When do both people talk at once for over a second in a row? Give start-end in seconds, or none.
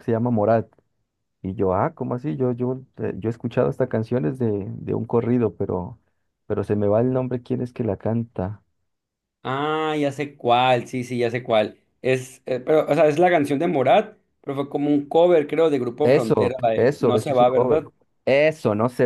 16.0-17.8